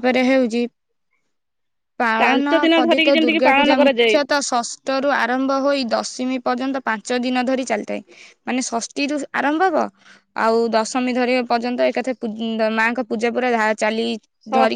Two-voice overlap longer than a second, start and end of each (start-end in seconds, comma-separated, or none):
2.2-4.2